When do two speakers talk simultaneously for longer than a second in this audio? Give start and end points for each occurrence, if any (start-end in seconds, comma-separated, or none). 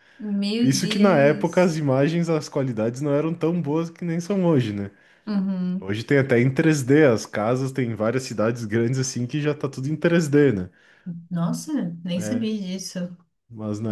0.6-1.8